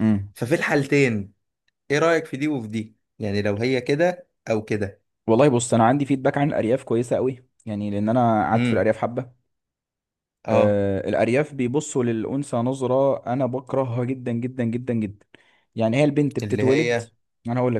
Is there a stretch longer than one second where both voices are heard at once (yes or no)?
no